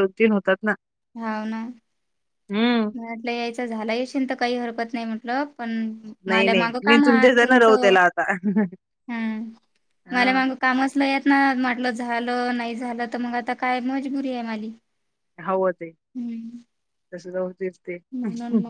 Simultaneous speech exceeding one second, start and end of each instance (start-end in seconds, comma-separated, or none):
6.3-7.9